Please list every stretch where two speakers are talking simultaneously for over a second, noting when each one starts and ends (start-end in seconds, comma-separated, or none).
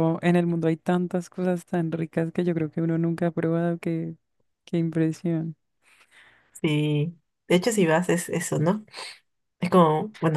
none